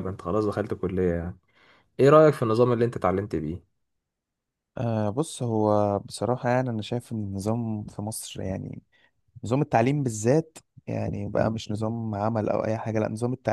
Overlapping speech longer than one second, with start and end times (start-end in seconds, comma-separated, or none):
none